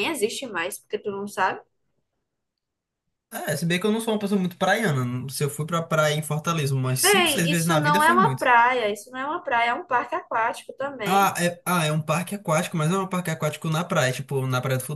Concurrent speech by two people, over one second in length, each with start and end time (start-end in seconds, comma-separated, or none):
7.0-8.4